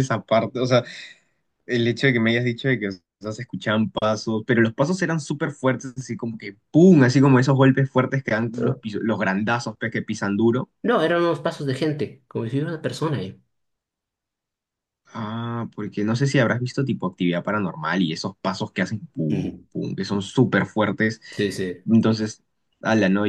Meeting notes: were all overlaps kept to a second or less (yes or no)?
yes